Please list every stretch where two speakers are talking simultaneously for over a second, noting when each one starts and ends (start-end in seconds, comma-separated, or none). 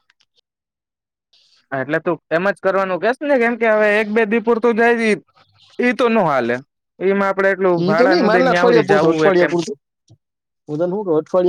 7.8-9.5